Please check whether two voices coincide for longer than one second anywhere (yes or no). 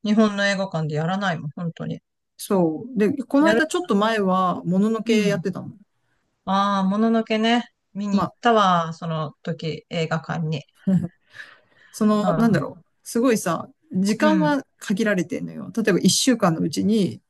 no